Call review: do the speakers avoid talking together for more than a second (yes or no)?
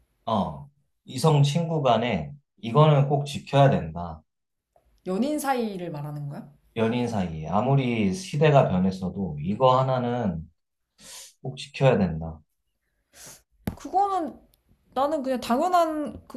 yes